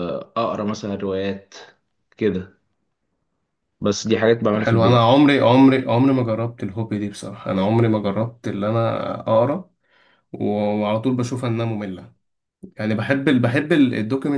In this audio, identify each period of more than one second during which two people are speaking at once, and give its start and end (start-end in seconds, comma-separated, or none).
none